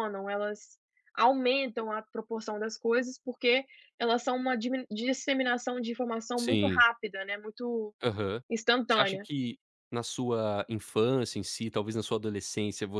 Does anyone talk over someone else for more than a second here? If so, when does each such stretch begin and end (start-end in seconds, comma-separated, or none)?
none